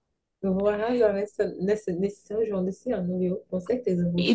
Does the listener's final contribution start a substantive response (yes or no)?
yes